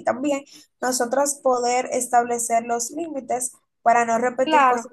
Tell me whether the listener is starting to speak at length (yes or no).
yes